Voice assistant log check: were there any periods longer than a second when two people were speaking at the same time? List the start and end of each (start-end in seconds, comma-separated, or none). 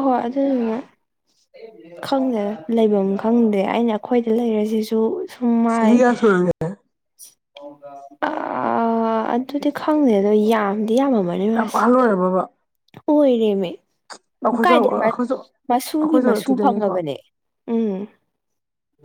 15.7-16.9